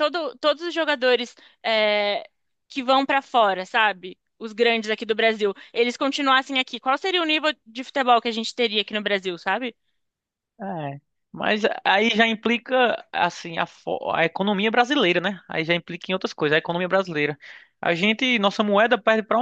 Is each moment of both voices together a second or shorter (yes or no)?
yes